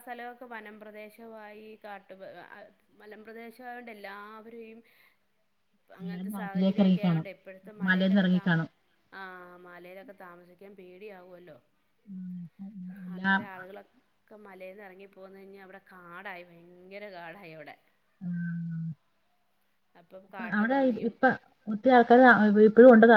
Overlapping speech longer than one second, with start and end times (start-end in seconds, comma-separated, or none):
6.0-7.2